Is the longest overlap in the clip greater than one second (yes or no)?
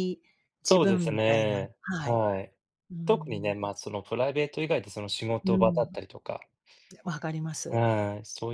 yes